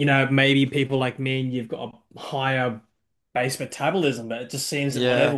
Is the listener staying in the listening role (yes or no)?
yes